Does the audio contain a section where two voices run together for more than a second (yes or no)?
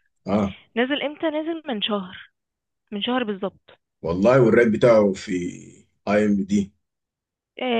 no